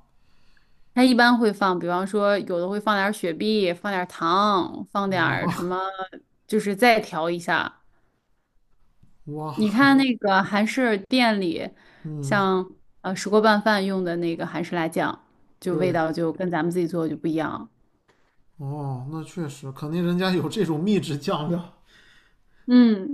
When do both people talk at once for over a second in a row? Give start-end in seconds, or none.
none